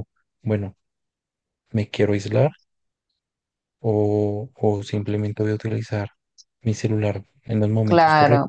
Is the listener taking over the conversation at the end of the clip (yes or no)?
yes